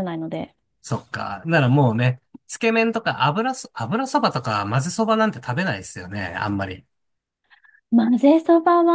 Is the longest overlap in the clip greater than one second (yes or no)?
no